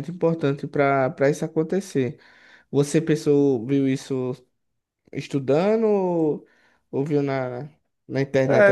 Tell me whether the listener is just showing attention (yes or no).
no